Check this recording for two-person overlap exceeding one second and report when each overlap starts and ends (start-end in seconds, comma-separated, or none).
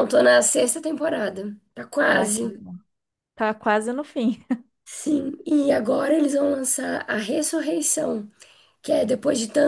none